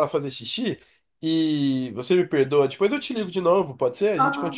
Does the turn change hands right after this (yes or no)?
yes